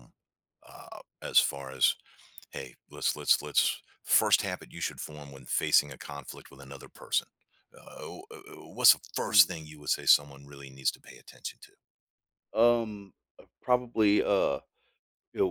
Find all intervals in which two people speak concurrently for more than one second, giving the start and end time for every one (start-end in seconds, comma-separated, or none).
none